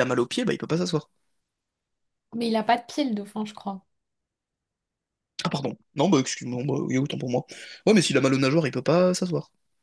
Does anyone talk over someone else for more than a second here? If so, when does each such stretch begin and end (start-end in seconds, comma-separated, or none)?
none